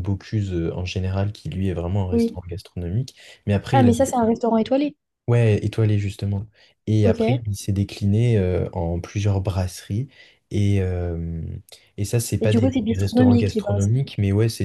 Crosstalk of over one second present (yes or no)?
yes